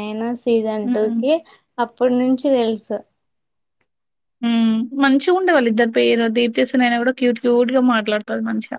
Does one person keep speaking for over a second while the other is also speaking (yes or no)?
no